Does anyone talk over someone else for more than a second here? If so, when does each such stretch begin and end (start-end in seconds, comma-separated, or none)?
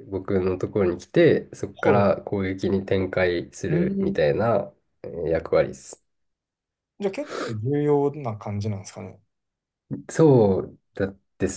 none